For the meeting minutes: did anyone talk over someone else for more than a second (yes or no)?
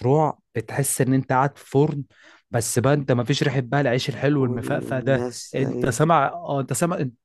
yes